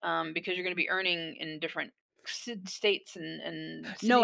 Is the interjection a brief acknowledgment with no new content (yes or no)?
no